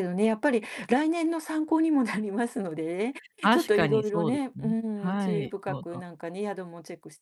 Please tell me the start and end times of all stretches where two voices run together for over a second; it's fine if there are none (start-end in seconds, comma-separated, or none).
3.5-6.0